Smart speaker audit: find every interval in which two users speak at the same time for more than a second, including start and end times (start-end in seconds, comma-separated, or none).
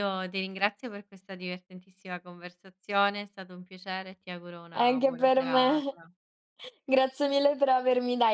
4.7-6.0